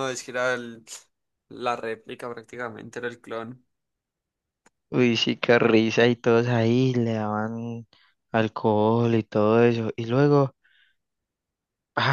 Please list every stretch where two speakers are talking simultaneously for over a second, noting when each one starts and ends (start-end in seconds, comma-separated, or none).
none